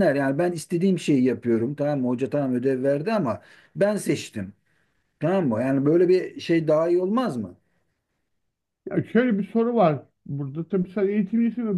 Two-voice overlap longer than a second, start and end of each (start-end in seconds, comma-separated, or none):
none